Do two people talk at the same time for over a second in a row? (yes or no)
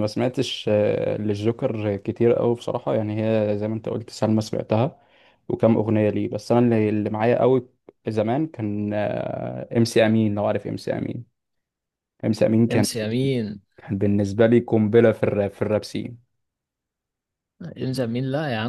no